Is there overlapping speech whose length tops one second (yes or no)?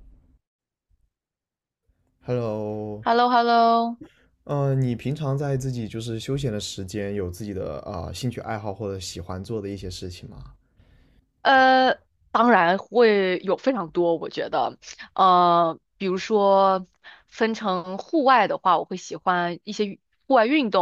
no